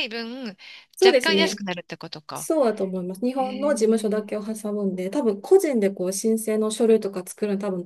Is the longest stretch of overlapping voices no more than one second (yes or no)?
yes